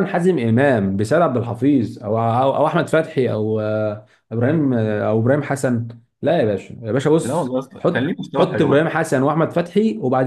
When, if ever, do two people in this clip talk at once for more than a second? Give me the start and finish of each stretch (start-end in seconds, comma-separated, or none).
7.2-8.9